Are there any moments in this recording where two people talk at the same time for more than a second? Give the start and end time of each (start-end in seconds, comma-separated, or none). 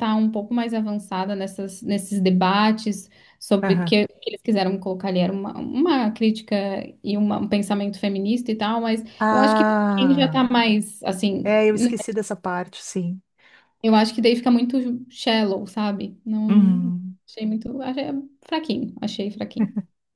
9.2-10.5